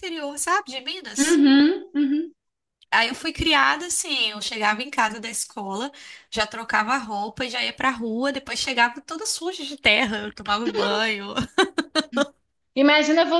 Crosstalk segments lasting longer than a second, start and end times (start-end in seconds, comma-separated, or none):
none